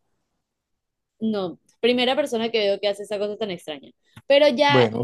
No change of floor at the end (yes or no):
yes